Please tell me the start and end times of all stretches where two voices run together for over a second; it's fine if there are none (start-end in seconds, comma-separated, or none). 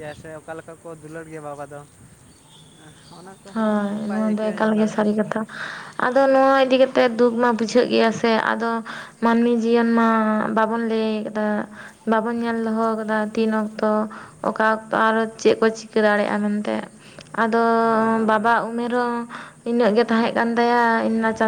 3.5-5.2